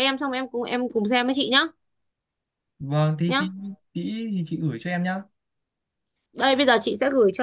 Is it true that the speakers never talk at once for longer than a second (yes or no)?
yes